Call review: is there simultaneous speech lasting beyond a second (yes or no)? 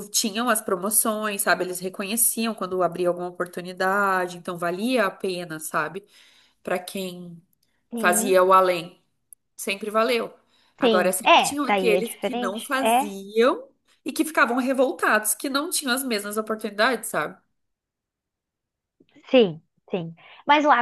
yes